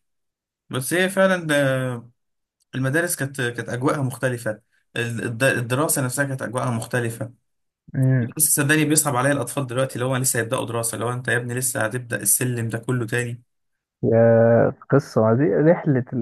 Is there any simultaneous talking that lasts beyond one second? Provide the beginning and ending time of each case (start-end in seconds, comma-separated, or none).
none